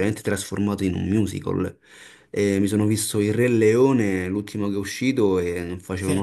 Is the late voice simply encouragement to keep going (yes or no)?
yes